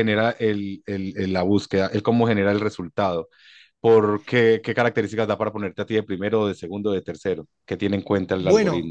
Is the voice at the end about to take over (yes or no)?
yes